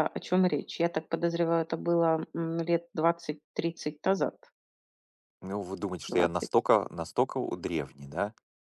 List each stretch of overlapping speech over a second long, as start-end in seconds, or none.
none